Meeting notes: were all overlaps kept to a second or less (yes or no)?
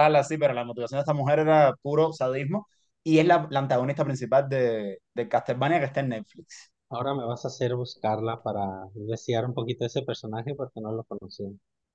yes